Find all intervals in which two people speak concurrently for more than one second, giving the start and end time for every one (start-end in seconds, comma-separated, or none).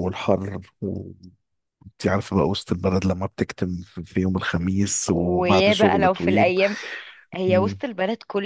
5.1-6.5